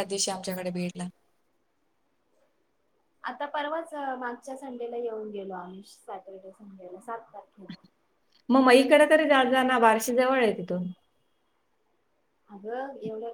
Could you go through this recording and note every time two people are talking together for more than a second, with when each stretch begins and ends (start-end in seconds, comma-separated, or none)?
none